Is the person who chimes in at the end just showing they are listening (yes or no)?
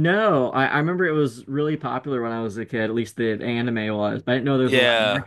no